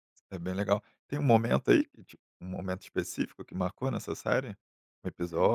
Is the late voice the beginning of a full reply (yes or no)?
no